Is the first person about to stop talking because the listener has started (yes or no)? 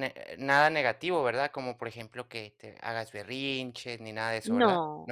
yes